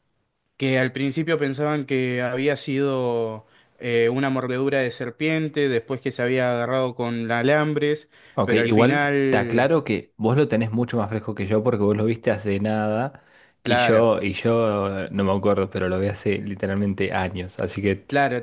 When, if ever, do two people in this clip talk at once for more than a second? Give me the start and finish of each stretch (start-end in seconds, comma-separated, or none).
8.3-9.7